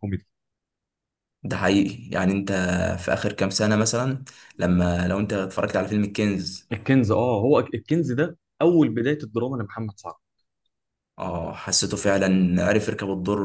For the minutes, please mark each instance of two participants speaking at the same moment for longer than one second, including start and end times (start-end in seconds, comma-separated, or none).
none